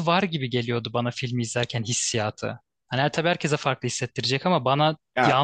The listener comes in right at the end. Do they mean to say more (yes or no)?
no